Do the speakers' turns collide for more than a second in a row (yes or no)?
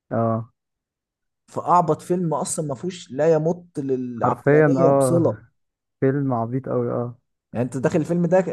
yes